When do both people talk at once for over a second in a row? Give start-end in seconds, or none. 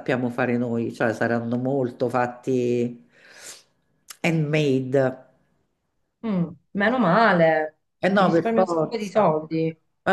8.1-9.4